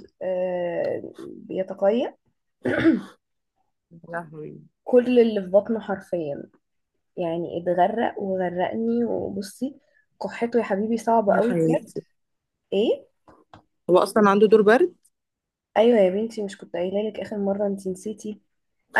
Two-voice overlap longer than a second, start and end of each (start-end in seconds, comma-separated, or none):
none